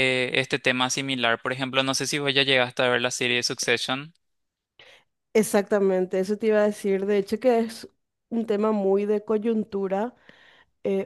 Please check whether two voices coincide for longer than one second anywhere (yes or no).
no